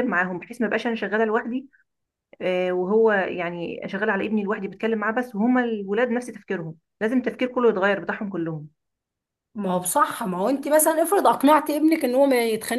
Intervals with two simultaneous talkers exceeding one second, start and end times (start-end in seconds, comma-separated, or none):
none